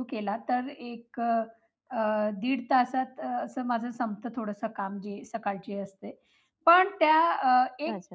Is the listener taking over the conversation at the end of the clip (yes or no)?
no